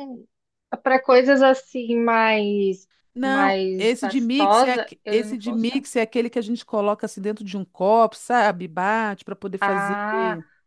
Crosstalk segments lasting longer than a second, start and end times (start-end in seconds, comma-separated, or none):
3.1-5.8